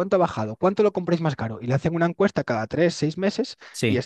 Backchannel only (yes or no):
yes